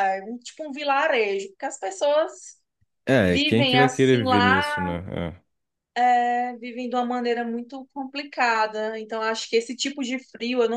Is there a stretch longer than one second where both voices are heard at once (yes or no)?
yes